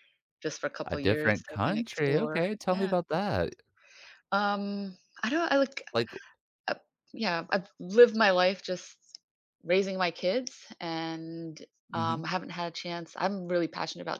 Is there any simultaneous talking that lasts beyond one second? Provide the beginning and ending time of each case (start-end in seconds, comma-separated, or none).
0.8-2.9